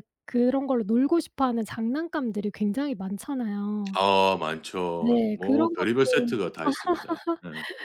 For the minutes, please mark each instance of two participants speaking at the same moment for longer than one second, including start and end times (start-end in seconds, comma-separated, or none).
5.0-6.3